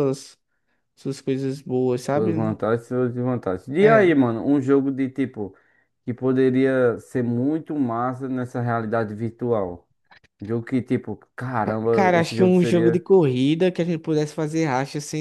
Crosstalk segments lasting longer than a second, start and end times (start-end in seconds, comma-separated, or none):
11.6-13.1